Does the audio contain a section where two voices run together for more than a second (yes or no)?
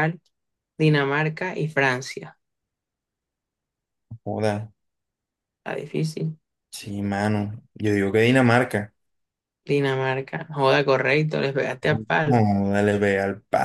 no